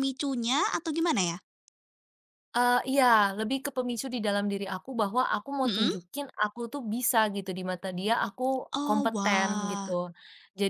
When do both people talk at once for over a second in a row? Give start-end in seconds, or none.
8.7-9.9